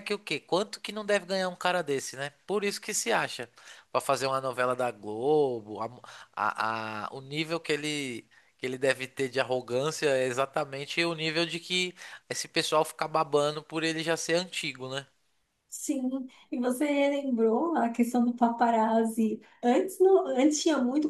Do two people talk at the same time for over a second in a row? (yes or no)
no